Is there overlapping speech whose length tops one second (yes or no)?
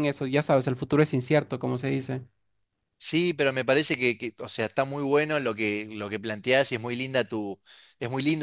no